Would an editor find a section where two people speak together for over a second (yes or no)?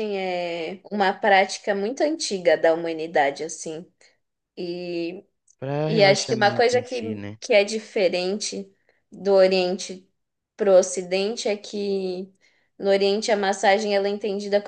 yes